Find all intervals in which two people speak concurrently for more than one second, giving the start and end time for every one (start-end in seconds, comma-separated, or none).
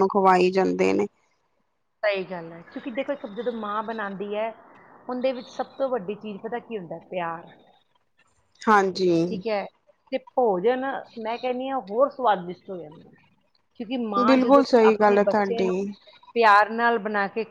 14.2-15.7